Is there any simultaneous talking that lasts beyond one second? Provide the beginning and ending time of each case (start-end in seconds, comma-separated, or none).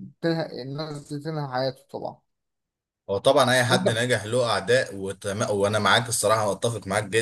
none